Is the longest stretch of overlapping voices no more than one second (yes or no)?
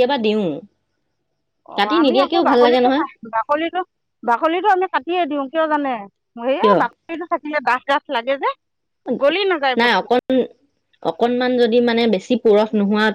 yes